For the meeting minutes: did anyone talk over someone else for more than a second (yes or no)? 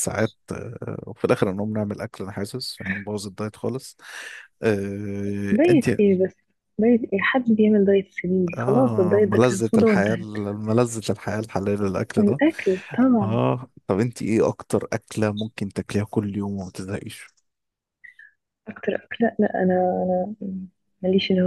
yes